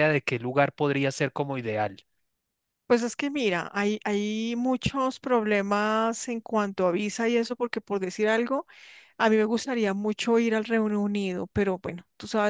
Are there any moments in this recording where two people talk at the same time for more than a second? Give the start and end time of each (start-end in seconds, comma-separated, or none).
none